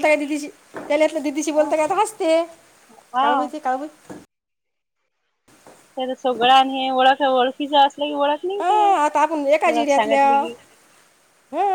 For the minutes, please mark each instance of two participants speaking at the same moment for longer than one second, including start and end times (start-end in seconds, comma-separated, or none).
8.6-10.3